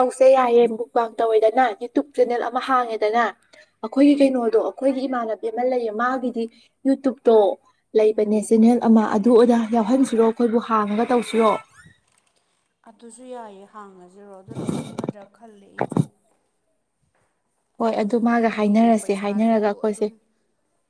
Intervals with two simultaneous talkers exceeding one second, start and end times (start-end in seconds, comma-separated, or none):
18.4-20.1